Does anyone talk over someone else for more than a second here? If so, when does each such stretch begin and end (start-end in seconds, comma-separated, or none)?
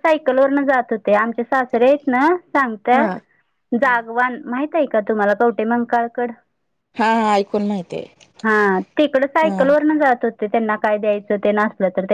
none